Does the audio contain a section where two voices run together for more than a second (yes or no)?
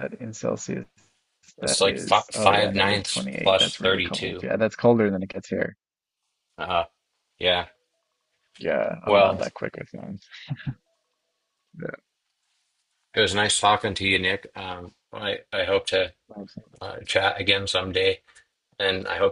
yes